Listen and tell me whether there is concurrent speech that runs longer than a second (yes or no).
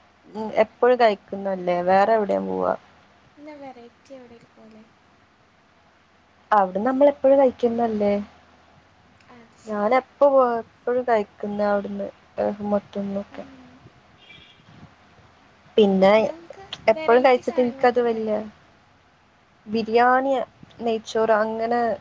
yes